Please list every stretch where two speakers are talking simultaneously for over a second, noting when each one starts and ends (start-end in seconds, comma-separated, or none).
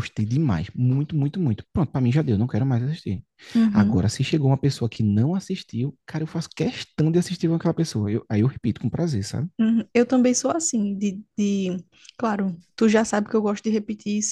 none